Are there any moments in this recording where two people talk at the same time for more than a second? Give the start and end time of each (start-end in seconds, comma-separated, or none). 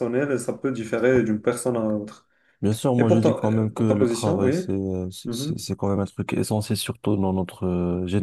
3.0-4.6